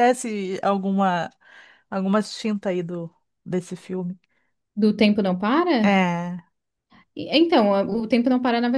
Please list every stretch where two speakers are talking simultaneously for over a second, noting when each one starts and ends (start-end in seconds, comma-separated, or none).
none